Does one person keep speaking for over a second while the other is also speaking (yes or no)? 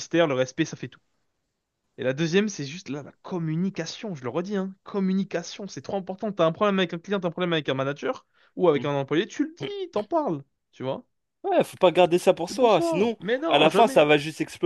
yes